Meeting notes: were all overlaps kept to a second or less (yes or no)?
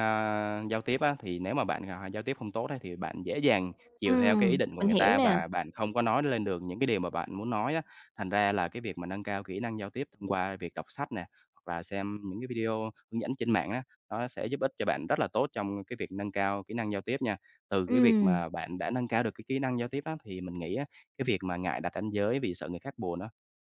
no